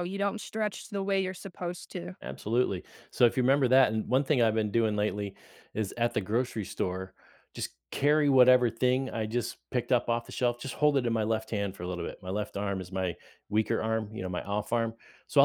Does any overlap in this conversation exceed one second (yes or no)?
no